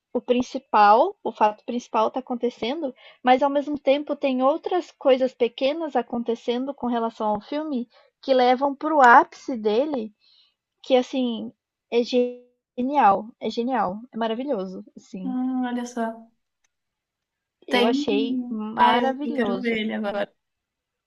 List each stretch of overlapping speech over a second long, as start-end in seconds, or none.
17.7-19.8